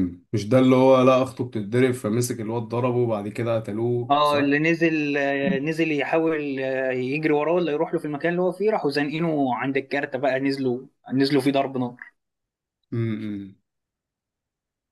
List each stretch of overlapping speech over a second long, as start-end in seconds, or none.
none